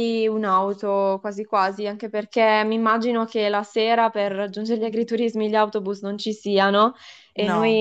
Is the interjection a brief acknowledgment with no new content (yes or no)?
yes